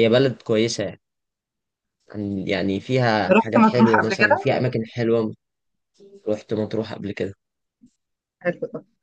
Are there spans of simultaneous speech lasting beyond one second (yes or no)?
yes